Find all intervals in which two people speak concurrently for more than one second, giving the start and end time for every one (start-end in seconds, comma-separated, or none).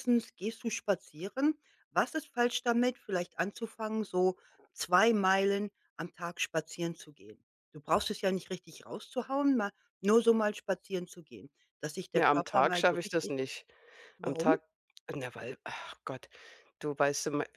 12.1-13.3